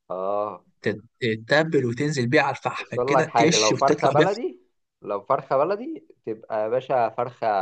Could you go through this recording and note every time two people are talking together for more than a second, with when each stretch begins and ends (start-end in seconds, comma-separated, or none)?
2.8-4.4